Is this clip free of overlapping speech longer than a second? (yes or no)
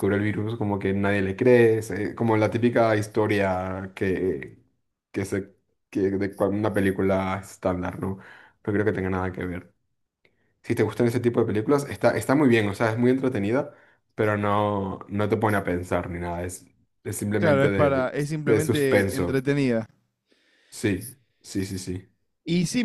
no